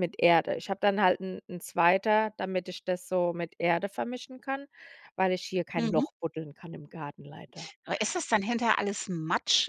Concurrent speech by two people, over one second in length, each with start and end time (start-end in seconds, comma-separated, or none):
none